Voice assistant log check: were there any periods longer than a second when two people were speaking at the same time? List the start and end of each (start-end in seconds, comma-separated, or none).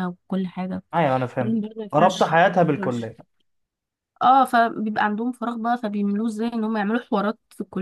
1.4-3.1